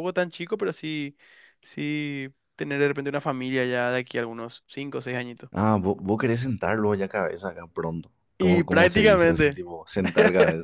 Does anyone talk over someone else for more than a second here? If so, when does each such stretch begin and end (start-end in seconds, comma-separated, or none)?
8.4-9.6